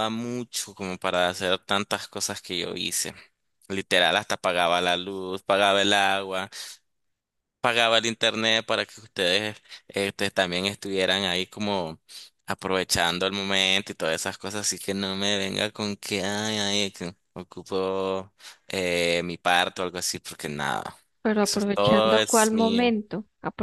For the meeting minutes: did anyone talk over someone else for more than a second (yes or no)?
yes